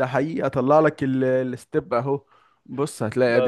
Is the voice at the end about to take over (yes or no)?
no